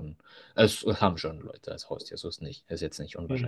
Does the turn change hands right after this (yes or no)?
yes